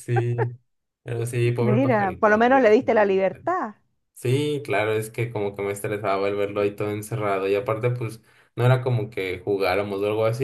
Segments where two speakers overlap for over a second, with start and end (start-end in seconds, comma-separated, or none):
1.6-3.5